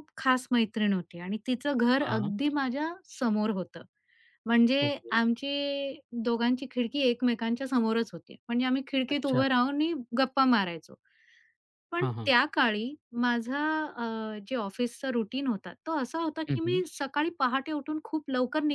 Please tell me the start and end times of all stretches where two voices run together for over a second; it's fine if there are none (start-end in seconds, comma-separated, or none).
none